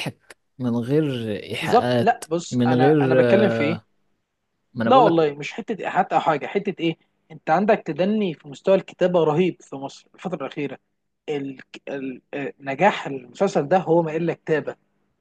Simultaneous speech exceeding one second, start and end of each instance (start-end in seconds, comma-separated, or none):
1.6-3.5